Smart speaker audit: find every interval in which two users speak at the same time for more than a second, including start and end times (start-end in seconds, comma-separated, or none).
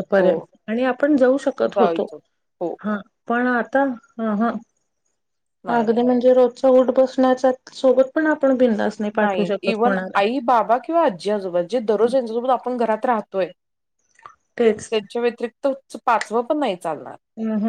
none